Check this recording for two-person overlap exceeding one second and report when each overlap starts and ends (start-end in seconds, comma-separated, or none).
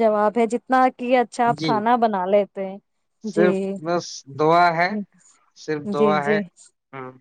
none